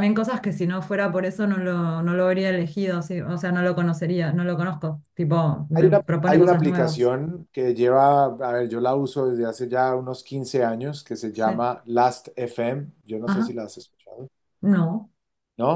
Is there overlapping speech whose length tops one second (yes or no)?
yes